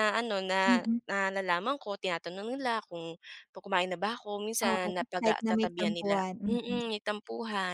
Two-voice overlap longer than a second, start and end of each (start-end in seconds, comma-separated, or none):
4.7-6.9